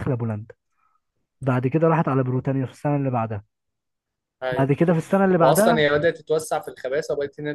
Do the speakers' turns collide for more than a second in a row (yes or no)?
no